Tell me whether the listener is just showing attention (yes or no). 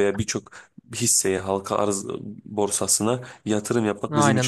no